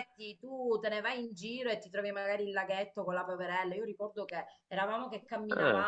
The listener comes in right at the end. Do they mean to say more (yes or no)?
no